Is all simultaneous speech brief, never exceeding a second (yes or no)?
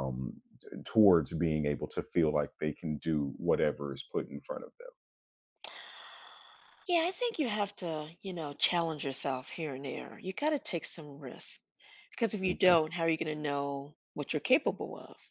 yes